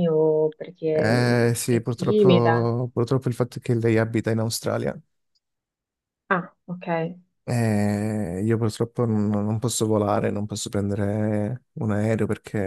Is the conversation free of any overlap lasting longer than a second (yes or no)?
no